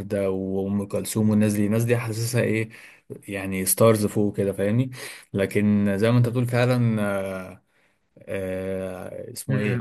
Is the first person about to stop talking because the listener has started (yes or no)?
yes